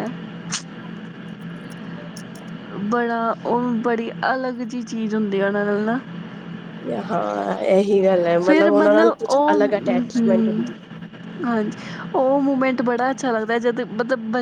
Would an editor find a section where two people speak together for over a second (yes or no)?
yes